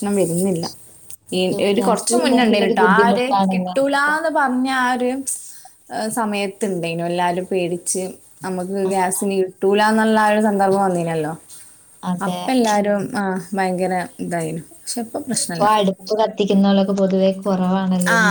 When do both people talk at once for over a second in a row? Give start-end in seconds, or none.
1.4-4.1